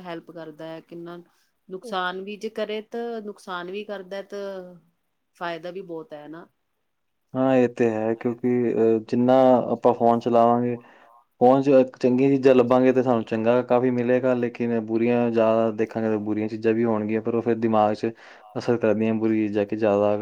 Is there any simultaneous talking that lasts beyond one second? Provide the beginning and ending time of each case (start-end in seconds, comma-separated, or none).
none